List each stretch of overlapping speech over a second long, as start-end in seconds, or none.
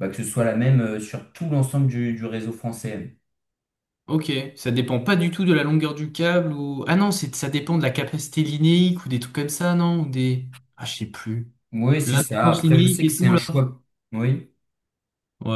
12.0-13.4